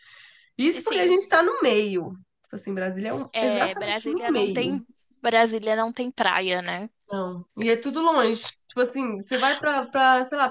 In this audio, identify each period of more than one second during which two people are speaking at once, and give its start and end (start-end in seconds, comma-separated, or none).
3.3-4.8